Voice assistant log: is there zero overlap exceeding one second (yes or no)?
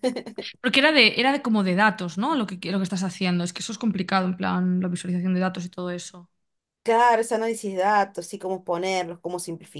yes